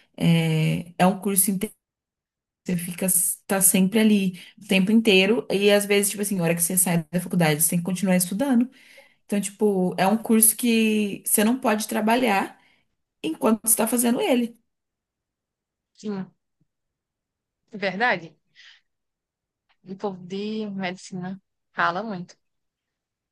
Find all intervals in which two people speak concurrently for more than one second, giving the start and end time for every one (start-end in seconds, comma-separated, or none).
none